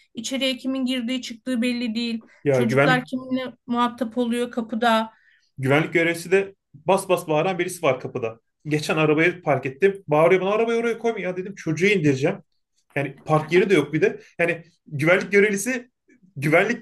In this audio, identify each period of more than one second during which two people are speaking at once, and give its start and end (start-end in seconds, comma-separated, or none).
none